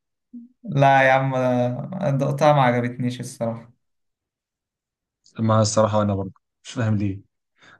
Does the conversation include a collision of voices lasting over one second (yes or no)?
no